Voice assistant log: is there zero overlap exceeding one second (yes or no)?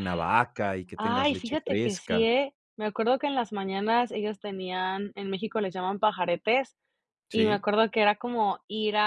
no